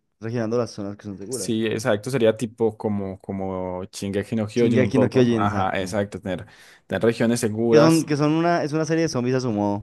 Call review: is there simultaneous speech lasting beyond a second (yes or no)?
yes